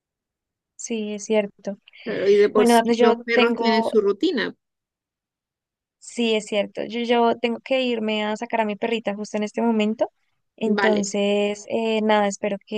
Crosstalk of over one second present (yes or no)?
yes